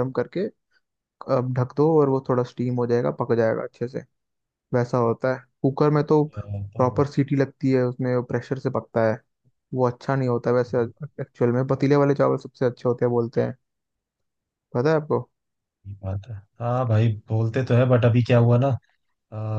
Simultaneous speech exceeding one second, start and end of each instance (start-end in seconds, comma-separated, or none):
none